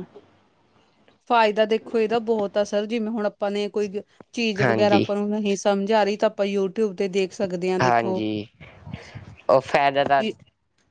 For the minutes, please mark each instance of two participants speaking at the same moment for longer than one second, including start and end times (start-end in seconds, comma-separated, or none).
none